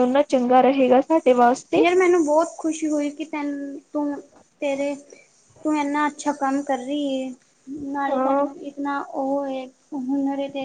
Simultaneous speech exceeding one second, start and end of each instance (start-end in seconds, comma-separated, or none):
none